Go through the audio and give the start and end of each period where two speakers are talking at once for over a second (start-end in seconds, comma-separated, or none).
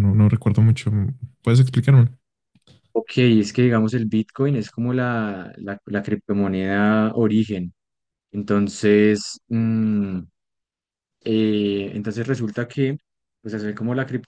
none